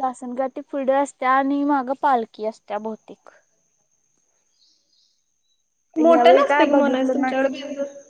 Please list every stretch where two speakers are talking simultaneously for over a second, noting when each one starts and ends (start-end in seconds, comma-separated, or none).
6.0-7.3